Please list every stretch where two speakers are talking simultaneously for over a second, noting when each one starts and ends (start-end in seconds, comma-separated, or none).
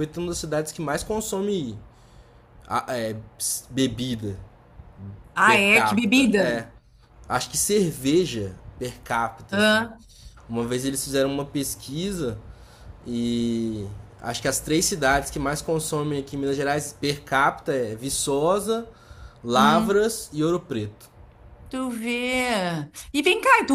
5.5-6.7